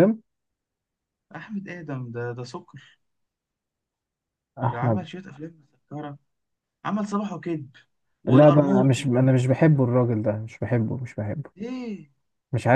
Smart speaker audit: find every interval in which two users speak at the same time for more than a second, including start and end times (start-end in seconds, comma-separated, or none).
8.3-10.2